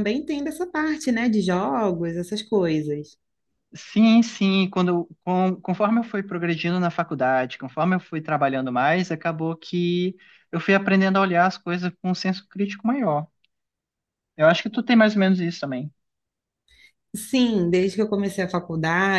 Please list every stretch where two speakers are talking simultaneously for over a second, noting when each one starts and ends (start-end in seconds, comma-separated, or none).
none